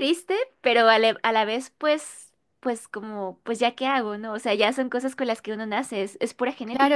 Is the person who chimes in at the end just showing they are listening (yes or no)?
no